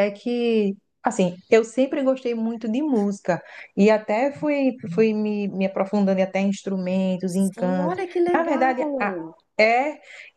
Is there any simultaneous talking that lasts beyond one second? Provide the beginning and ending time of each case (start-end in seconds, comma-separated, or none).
7.2-9.2